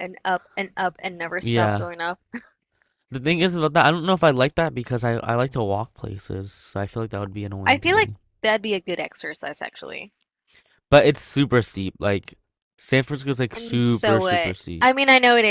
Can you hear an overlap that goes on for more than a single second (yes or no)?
yes